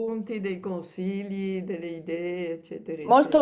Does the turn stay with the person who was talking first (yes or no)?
no